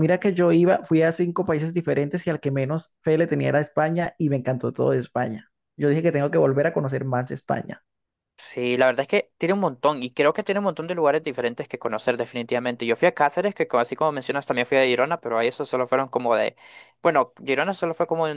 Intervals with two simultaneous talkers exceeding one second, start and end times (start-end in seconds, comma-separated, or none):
none